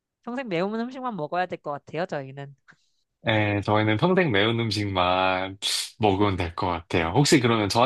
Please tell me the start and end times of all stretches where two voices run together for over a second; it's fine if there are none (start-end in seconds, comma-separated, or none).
none